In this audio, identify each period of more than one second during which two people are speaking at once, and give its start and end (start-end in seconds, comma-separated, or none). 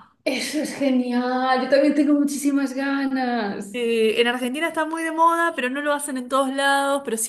none